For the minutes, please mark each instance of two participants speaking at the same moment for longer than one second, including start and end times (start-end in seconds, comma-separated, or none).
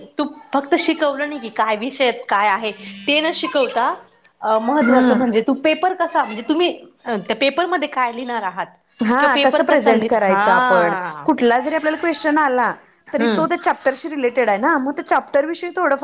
9.2-11.3